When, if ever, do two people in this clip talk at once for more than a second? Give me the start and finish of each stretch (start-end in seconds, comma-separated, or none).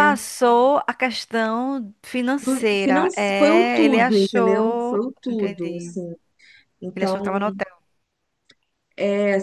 2.4-5.9